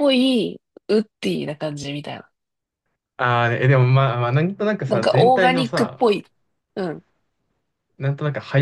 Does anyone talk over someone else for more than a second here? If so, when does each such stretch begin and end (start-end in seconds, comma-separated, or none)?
4.9-6.1